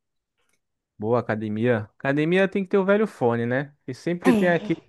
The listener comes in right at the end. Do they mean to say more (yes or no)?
no